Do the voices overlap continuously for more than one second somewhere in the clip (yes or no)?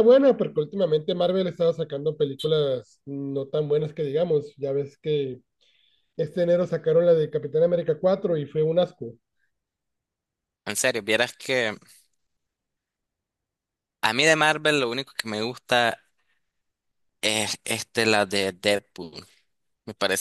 no